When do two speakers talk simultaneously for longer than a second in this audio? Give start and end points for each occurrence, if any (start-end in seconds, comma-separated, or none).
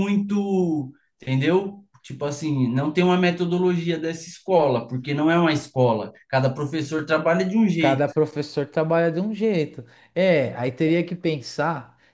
none